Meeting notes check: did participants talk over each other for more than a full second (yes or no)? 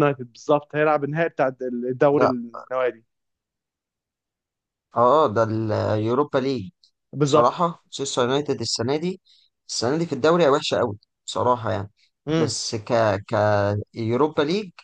no